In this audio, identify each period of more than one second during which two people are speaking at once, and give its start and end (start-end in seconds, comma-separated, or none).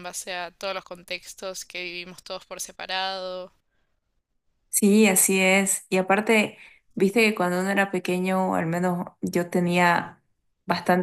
none